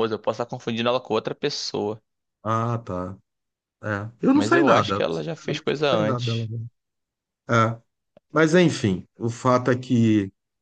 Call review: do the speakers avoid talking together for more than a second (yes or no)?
no